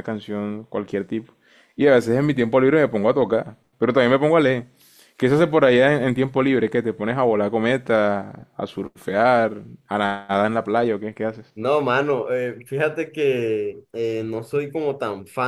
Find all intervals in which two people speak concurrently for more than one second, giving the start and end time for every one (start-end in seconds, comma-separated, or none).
none